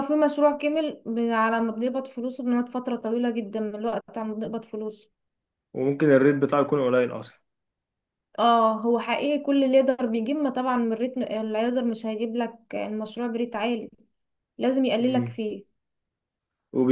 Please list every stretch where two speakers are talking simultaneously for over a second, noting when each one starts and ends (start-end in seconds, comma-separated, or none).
none